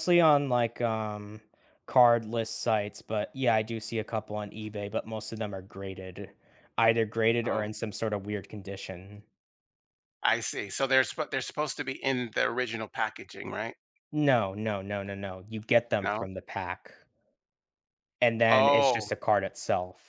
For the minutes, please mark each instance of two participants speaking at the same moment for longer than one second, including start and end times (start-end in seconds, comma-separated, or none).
none